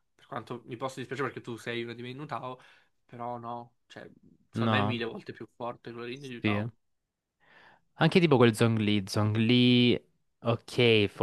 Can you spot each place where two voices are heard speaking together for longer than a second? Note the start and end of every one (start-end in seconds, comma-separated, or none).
none